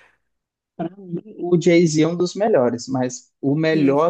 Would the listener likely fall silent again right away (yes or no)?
yes